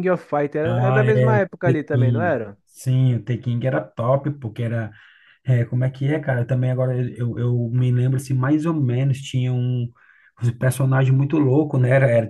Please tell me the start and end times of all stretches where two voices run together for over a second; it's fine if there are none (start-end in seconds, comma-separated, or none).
0.7-2.6